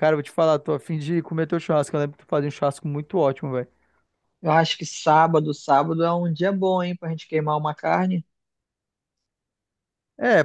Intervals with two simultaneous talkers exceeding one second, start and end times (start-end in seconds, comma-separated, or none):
none